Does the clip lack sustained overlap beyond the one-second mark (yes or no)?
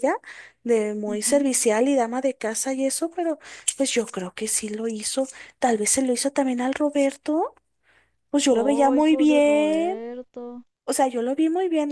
no